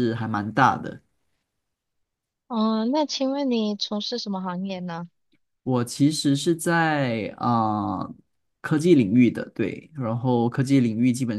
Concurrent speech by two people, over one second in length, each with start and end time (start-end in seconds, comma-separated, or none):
none